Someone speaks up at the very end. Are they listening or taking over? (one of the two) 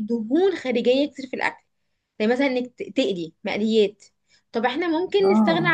listening